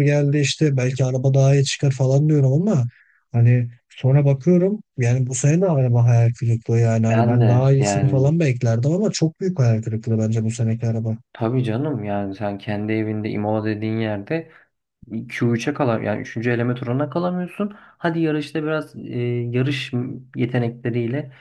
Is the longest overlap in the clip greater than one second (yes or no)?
yes